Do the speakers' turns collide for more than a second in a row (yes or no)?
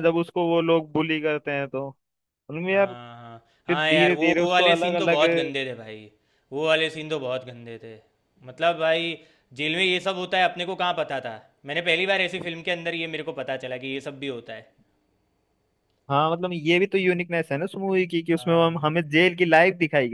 yes